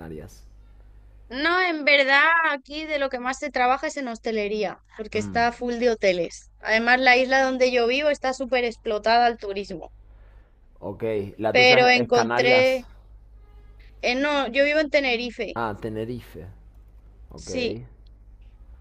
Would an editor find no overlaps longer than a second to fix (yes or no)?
no